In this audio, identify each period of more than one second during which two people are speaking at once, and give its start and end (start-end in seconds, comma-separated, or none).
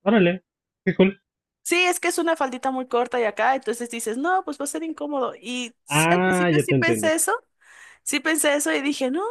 5.9-7.1